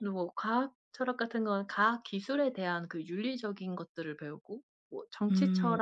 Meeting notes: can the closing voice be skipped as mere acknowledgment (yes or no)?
yes